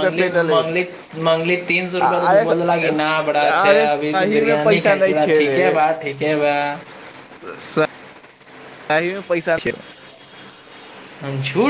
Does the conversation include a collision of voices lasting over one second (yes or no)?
yes